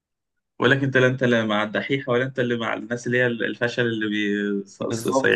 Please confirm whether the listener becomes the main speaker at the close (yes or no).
yes